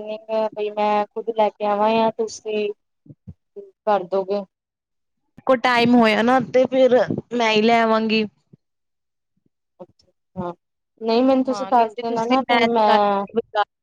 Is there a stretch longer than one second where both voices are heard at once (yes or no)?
yes